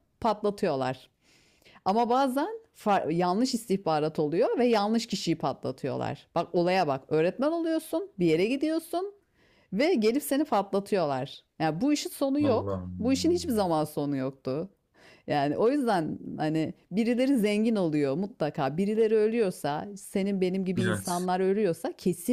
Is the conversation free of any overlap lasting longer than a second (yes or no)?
no